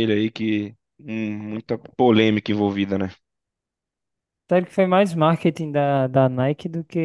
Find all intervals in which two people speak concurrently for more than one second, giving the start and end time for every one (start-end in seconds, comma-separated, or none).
none